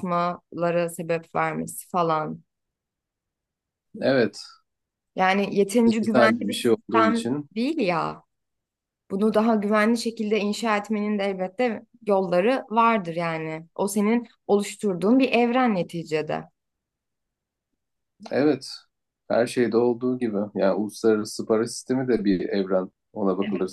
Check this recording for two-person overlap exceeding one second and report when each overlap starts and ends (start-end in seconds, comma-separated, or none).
5.8-7.5